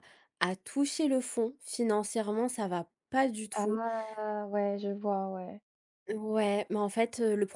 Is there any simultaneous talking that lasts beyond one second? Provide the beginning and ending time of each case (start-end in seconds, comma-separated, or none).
none